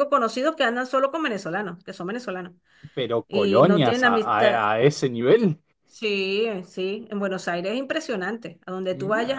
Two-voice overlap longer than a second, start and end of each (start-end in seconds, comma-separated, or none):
3.3-4.7